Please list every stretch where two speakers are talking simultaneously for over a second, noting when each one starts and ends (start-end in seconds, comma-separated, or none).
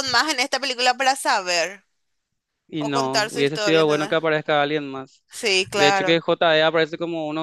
2.8-4.2